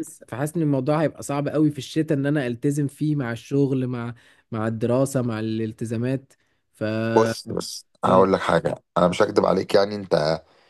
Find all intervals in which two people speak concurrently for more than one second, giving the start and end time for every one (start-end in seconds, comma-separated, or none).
none